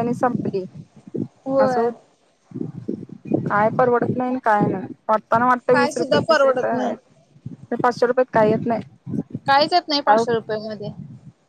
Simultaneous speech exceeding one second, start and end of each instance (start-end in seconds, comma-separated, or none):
5.7-6.9